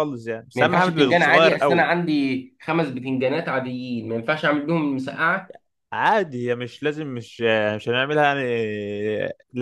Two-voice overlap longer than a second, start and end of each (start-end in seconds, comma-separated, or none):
0.5-1.8